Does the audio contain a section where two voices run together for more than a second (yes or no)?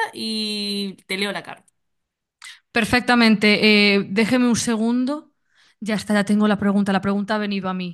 no